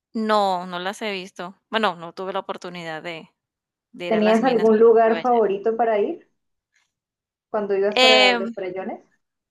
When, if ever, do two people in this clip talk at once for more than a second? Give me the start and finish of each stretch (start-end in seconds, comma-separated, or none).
4.1-5.4